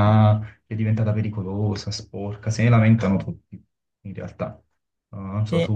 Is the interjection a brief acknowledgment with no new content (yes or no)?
yes